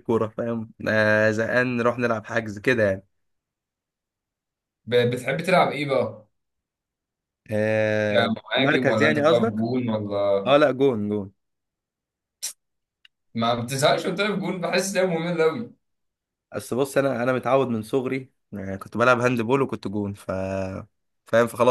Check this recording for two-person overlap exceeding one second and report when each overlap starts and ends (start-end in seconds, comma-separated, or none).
8.1-9.7